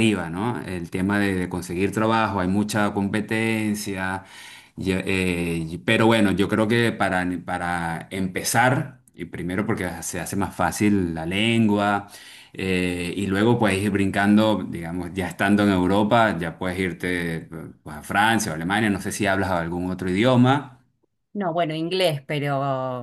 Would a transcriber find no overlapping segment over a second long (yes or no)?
yes